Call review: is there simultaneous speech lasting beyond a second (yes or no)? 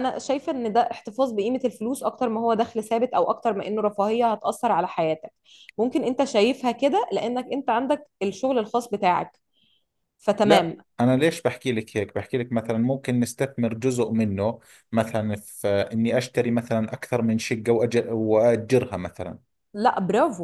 no